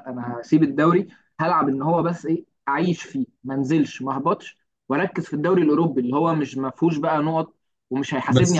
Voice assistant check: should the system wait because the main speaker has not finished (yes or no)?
no